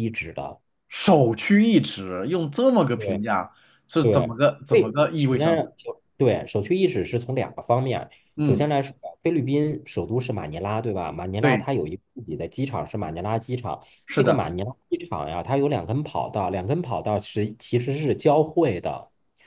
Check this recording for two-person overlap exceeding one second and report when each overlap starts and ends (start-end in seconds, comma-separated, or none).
4.0-5.7